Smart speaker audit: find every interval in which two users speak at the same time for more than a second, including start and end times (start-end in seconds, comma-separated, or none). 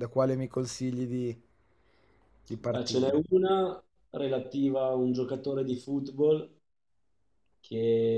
none